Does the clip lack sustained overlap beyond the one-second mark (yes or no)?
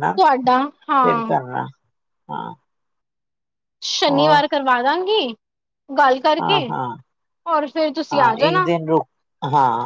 yes